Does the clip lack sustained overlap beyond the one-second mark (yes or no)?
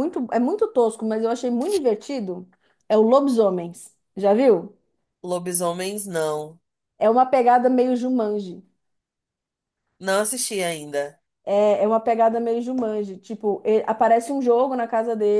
yes